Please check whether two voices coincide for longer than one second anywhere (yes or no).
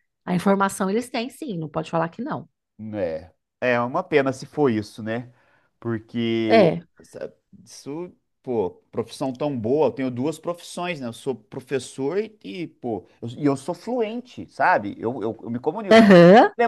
no